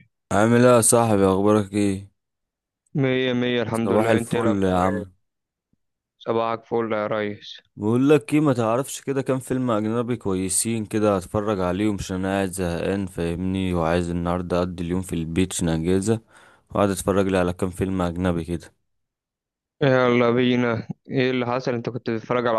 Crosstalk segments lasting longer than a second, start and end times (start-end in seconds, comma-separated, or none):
3.7-5.1